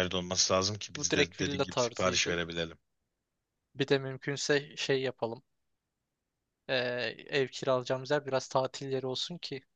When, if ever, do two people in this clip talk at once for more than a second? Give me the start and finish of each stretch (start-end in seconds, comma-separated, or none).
0.9-2.4